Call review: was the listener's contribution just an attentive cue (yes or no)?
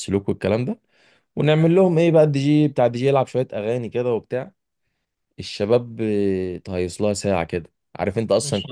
yes